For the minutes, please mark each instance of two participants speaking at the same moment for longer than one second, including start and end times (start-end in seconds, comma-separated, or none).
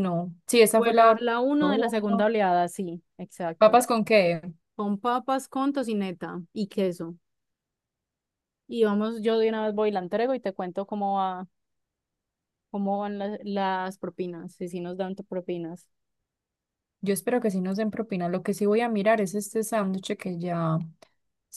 0.8-2.3